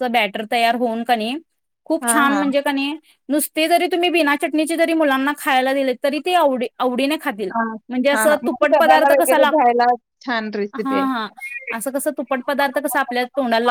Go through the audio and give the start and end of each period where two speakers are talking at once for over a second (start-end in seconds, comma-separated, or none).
8.2-9.7